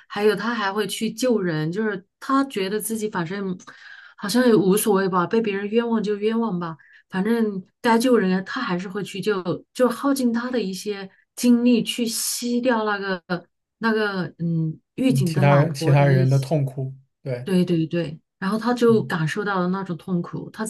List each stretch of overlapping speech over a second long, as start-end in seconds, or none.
15.1-16.5